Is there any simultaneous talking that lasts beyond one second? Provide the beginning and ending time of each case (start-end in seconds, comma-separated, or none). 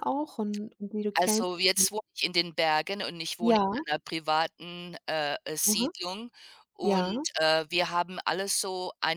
none